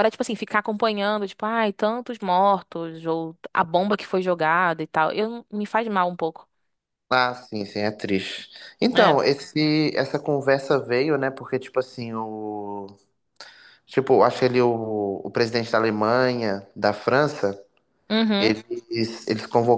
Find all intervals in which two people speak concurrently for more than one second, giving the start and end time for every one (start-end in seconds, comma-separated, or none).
none